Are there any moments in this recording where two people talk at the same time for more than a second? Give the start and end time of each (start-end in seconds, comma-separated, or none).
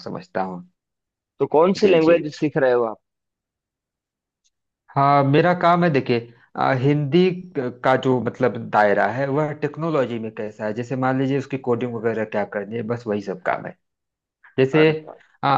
none